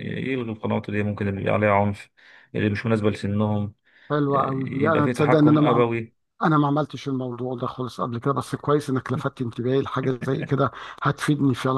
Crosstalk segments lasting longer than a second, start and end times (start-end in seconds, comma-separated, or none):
4.3-5.8